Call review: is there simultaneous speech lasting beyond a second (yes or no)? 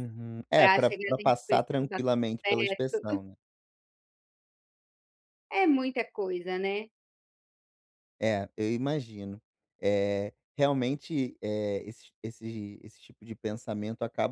yes